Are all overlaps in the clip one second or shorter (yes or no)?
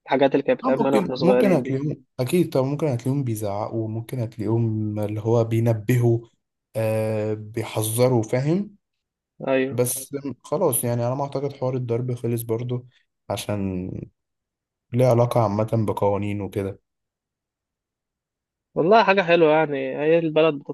no